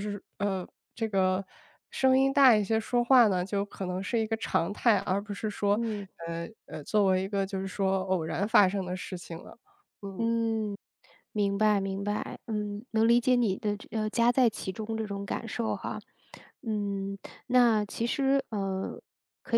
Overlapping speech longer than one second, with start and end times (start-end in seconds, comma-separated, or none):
none